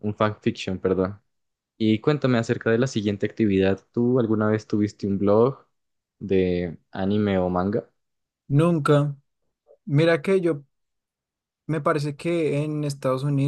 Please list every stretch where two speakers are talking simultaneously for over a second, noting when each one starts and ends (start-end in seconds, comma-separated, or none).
none